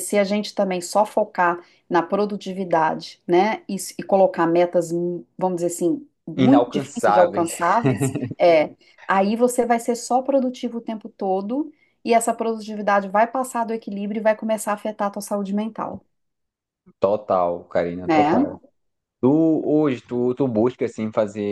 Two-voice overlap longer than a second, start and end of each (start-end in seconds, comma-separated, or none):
6.4-7.6